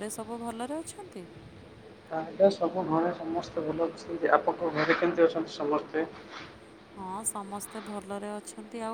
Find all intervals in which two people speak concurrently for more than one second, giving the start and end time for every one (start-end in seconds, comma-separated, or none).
none